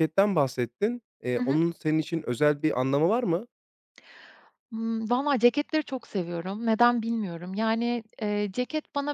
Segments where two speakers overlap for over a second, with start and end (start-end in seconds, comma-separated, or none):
none